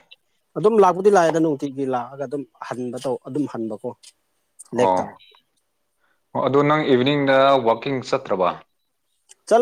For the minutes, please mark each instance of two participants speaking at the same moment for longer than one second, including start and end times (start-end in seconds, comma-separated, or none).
none